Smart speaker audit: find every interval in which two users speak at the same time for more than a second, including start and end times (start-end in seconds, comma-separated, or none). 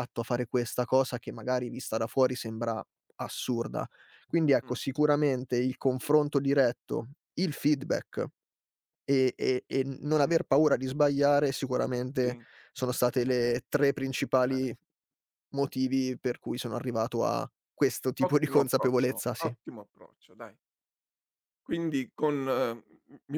18.2-19.5